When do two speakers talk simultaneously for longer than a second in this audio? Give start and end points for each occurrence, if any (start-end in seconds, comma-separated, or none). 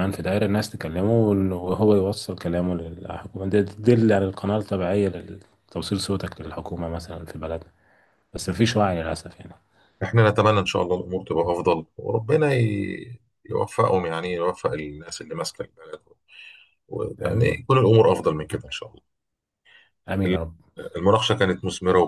none